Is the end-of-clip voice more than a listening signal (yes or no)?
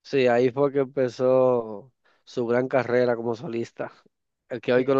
no